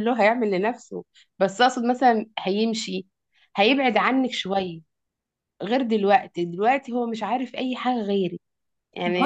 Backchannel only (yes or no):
no